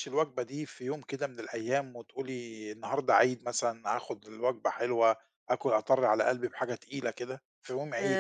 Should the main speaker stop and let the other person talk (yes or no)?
yes